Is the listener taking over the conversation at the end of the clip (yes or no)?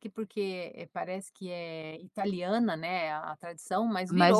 yes